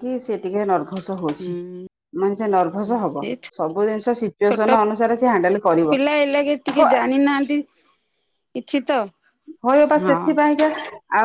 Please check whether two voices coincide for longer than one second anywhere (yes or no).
no